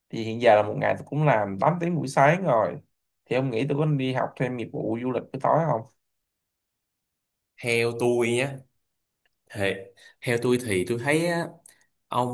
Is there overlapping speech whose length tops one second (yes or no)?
no